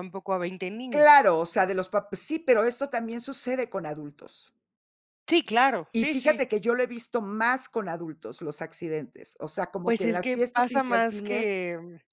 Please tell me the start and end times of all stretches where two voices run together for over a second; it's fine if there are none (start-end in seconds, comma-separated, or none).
9.9-11.6